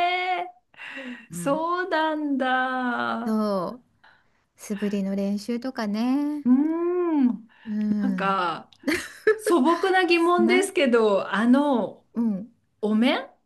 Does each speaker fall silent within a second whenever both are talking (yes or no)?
yes